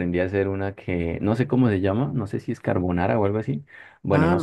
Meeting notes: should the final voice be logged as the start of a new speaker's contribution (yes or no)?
no